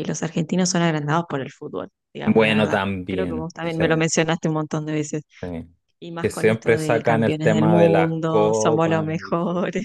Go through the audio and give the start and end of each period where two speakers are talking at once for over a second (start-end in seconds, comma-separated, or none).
2.2-3.8, 6.2-9.3